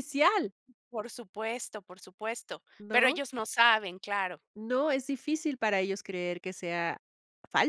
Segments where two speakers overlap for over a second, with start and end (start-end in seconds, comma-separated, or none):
none